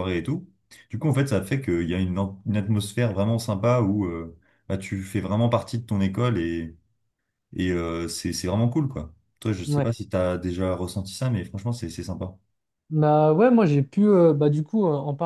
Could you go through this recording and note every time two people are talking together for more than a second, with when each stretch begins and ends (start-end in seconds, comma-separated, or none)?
none